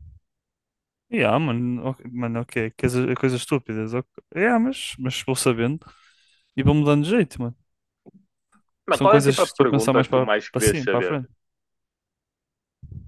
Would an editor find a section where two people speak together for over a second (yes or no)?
yes